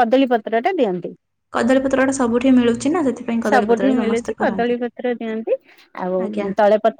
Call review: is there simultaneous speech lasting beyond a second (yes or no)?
yes